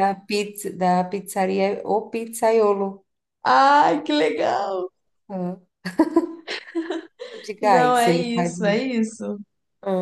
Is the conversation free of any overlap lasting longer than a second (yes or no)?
no